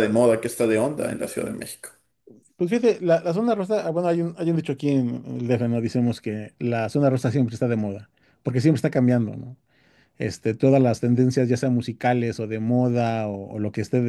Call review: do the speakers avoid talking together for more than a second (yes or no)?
yes